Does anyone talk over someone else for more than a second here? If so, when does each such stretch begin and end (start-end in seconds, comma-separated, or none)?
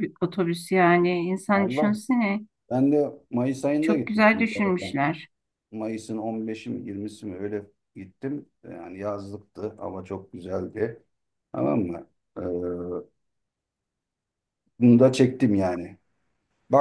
3.8-5.0